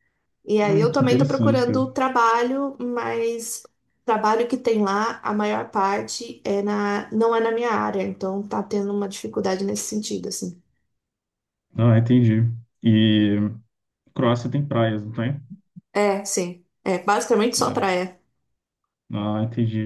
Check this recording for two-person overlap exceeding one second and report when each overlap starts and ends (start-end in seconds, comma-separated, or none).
0.6-1.9